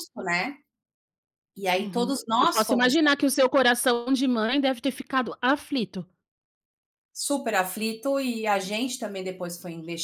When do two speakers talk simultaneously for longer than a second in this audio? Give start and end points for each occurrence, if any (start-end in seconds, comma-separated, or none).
1.8-3.2